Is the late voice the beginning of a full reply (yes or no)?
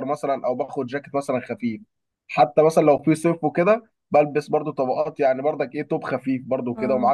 no